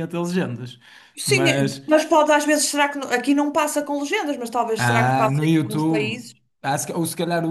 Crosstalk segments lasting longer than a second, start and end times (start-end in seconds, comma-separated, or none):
4.8-6.2